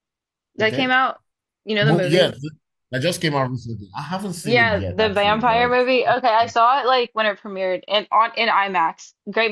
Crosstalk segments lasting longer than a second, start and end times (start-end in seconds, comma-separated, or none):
4.4-5.8